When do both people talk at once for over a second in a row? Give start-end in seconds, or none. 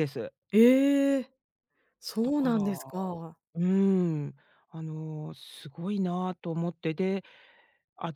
none